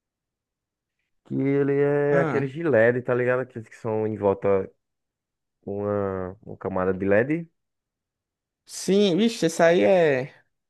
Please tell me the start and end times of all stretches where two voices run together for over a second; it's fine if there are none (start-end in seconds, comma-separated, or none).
none